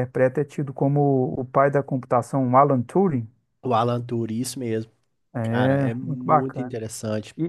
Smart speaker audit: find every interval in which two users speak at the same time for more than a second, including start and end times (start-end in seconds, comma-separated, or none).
5.4-6.8